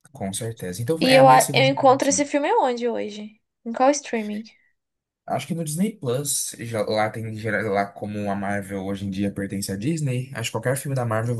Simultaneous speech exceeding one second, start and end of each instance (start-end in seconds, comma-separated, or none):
1.0-2.2